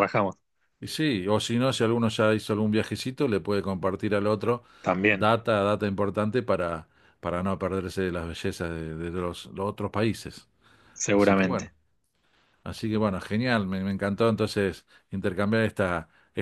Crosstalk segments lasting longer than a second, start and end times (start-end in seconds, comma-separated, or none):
none